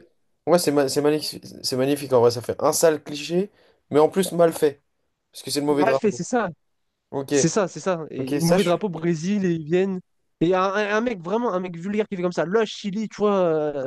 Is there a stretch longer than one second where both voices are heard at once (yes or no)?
no